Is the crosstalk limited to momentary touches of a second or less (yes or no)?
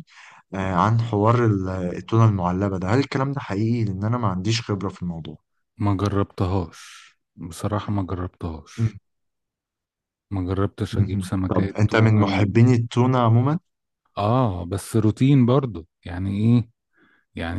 no